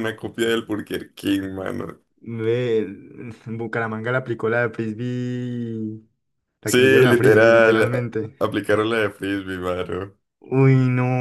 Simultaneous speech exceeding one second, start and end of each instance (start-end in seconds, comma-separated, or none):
6.6-8.3